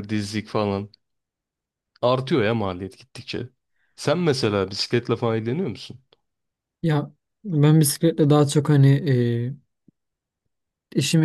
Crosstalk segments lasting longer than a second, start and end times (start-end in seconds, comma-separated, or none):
none